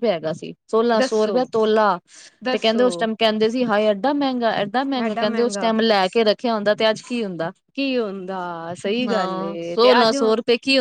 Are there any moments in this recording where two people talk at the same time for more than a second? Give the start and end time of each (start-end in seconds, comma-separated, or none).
none